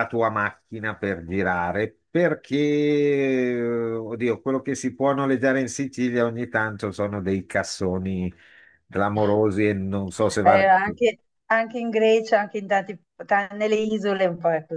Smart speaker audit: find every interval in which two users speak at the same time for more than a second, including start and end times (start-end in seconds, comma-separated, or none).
none